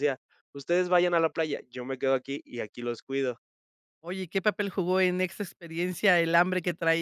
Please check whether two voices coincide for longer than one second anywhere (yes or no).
no